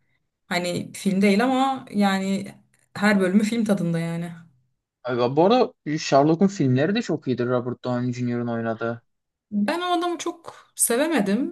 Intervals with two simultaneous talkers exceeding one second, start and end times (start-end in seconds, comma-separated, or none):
none